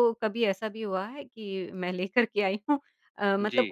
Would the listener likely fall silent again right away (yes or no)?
yes